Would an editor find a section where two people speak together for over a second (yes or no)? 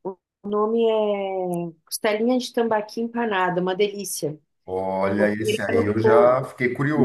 yes